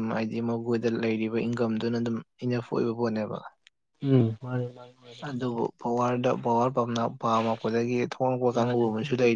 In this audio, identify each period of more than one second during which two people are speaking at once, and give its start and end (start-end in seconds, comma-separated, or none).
none